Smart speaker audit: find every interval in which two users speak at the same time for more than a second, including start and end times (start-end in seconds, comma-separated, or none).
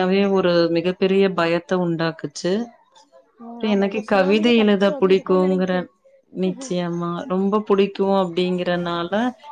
3.6-5.7